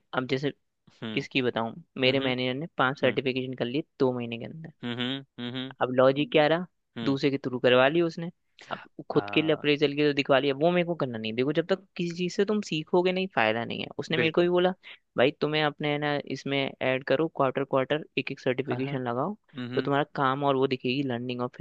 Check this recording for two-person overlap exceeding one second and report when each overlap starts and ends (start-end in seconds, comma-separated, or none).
none